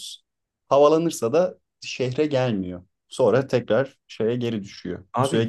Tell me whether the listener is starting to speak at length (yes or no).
yes